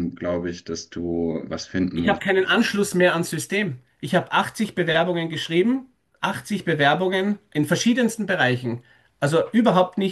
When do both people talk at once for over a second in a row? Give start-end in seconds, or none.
none